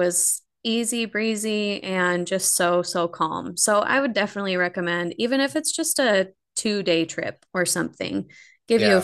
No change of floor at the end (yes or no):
yes